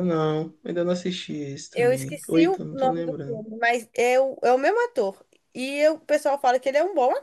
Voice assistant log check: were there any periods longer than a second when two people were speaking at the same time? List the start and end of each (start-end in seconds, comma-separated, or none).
1.7-3.4